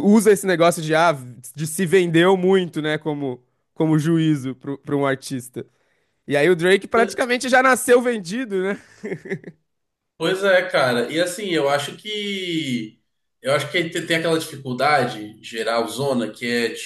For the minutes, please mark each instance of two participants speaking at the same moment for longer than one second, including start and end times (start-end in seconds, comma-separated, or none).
none